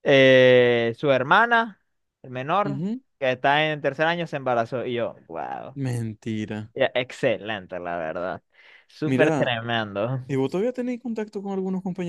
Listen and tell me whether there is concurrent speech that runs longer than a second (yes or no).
no